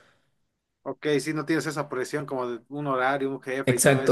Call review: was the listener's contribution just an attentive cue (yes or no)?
no